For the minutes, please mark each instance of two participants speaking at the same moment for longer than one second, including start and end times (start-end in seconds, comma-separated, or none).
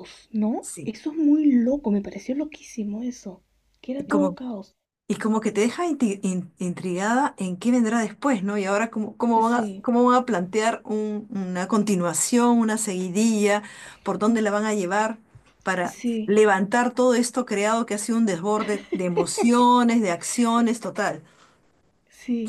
none